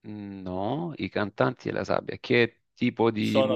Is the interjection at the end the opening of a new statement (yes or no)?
yes